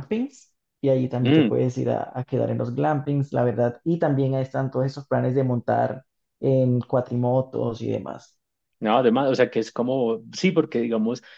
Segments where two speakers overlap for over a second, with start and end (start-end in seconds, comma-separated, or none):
none